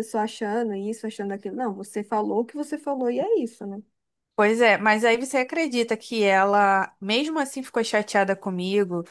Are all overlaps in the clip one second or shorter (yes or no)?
yes